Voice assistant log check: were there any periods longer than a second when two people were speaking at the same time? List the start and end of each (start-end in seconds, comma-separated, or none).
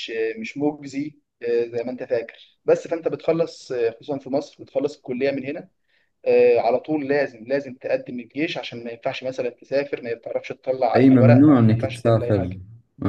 10.9-12.6